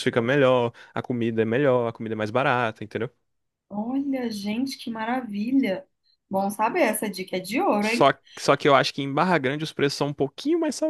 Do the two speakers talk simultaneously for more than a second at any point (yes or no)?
no